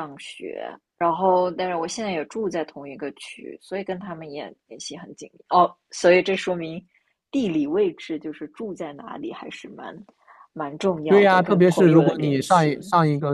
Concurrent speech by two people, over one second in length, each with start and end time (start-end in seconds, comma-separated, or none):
11.1-12.7